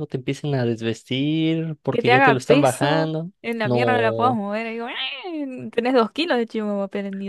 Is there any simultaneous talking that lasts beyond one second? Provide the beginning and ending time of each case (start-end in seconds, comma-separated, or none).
1.9-4.4